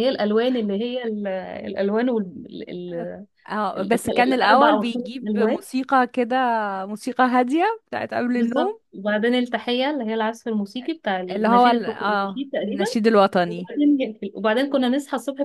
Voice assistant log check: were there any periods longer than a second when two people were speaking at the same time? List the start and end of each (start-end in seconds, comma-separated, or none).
3.8-5.6, 11.3-12.8